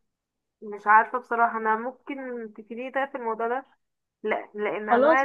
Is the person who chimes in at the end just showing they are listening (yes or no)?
yes